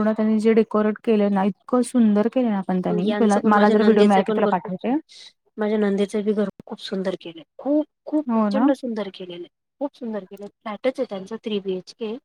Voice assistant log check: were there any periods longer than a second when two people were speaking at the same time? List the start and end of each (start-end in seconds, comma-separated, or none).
3.1-4.9